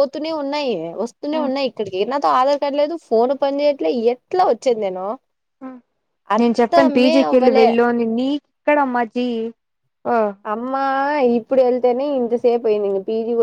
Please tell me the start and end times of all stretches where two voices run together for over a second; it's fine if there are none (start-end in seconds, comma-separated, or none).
6.4-7.7